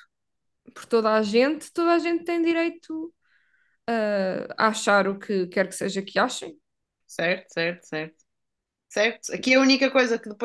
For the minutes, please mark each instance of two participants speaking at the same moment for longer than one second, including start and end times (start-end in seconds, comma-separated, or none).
none